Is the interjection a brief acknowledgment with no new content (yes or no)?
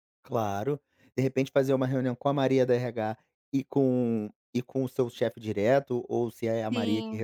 yes